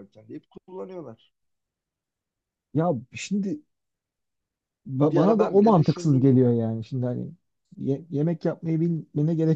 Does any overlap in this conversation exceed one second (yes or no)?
yes